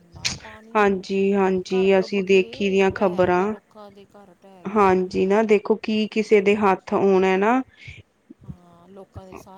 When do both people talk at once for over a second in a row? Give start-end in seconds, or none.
1.7-3.5